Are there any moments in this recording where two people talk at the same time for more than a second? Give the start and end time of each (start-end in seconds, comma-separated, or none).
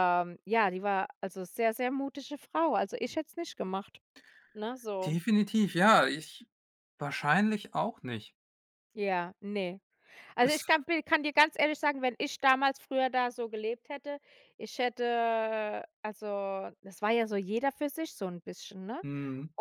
none